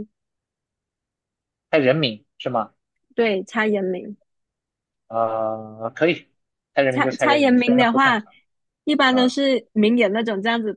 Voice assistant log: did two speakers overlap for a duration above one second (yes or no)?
yes